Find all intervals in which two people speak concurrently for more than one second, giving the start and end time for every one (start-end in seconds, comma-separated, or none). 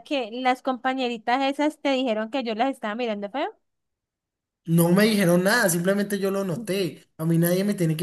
none